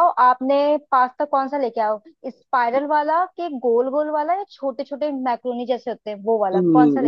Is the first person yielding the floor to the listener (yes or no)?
yes